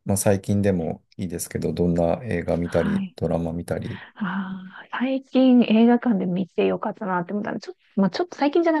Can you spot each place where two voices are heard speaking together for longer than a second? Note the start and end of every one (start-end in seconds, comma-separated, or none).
none